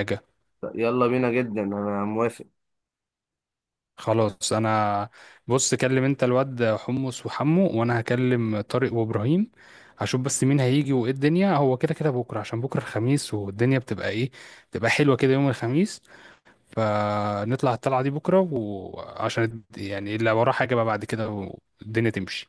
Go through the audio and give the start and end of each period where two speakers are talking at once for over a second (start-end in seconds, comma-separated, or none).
none